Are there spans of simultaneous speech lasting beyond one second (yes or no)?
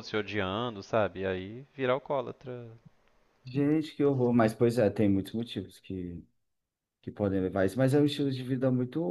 no